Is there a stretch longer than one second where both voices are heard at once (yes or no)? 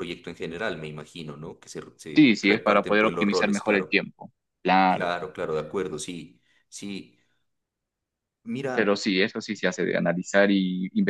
yes